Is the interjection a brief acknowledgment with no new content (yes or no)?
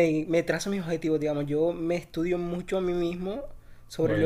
yes